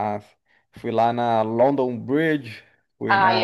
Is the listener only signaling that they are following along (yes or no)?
no